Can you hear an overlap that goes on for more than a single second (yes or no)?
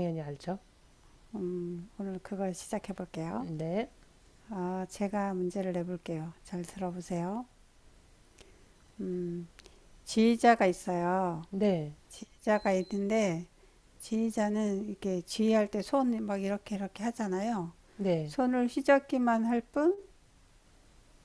no